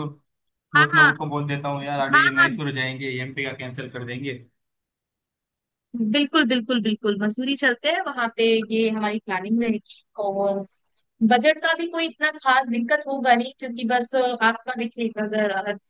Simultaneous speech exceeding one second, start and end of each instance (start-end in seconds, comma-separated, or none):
none